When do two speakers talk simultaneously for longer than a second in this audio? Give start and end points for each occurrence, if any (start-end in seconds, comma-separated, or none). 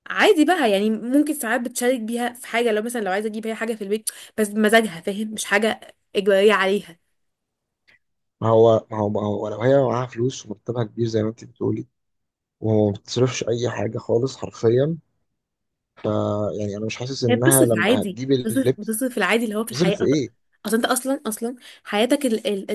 17.3-18.9